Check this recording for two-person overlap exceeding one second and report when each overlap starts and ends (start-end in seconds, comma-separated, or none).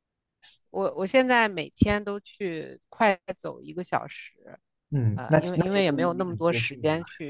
5.1-6.8